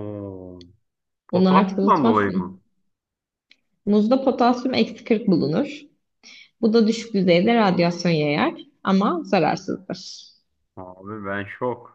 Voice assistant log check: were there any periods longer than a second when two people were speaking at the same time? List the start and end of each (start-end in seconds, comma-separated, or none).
1.3-2.6